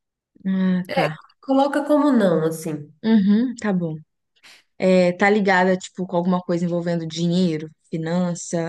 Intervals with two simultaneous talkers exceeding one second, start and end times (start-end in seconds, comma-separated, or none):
none